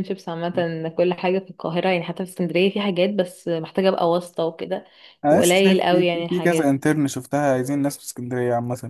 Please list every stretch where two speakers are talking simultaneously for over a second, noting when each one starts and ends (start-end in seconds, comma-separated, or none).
5.3-6.8